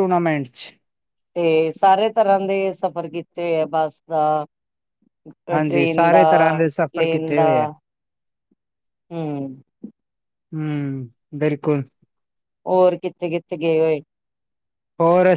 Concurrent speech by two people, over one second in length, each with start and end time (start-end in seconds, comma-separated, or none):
5.5-7.5